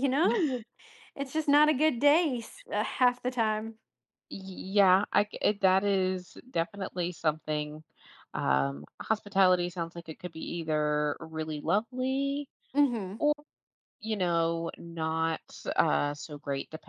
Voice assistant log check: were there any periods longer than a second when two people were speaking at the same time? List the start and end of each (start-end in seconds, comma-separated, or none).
none